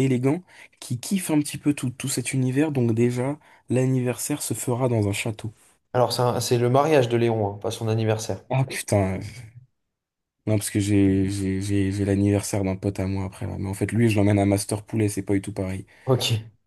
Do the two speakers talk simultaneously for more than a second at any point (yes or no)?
no